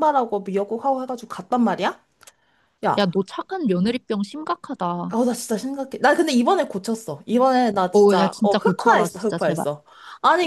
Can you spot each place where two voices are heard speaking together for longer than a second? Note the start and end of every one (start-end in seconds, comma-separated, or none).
7.9-9.7